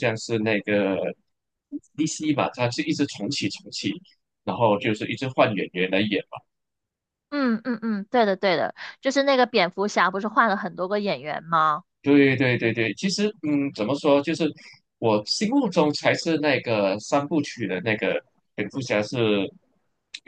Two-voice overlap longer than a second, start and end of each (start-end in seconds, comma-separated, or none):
none